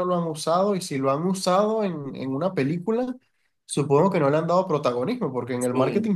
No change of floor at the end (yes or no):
yes